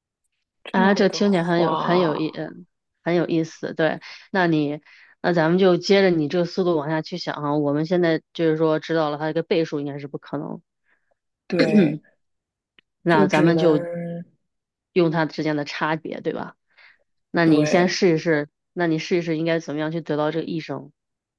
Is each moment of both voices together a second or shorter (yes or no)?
no